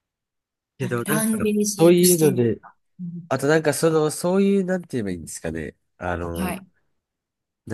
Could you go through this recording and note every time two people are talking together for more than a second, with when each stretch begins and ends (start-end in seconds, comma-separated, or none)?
0.8-2.6